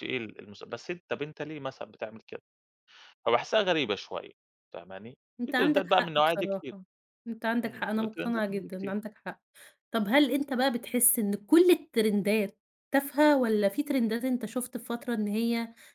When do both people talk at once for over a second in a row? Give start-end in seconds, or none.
5.4-6.8, 7.7-8.9